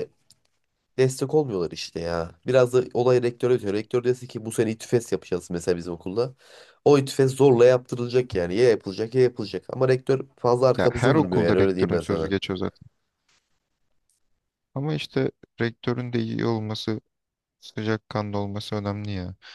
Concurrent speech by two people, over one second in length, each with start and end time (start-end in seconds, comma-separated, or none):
10.8-12.3